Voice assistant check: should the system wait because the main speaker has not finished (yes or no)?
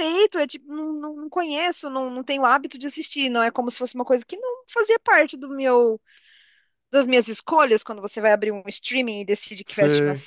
yes